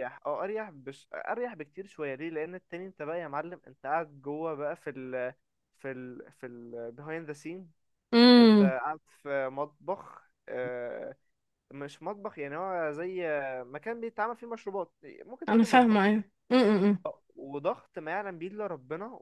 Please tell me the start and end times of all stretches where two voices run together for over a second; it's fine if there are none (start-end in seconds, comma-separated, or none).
none